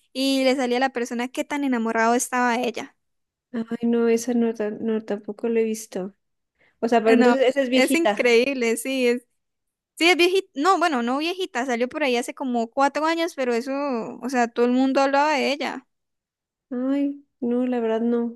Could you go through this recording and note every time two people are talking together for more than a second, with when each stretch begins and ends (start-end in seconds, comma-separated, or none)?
7.0-8.4